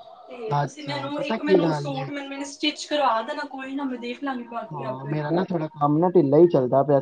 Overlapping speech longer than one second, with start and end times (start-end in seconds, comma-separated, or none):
0.6-2.0